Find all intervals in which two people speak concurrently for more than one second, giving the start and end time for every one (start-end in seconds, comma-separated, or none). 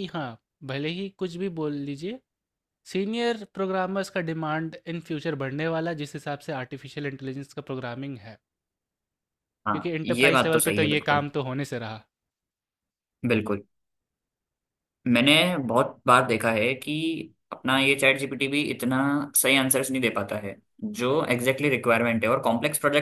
9.7-11.2